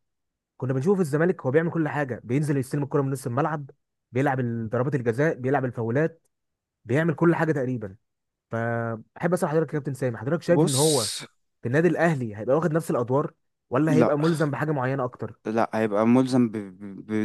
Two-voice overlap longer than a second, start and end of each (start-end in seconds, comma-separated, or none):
none